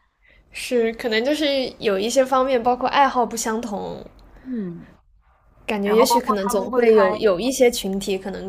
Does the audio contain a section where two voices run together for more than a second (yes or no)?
yes